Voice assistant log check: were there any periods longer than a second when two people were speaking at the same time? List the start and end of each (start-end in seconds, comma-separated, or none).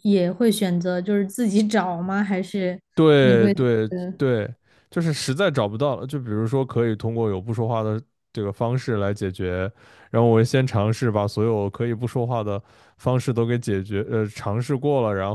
none